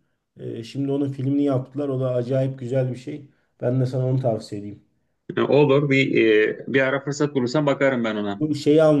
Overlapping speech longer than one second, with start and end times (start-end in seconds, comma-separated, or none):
none